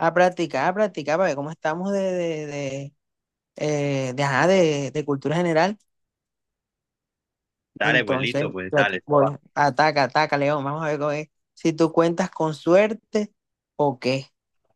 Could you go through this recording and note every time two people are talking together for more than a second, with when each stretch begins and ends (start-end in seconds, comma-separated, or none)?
7.8-9.3